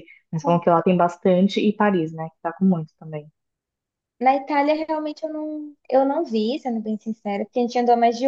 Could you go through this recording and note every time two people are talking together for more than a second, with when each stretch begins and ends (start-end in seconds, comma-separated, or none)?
none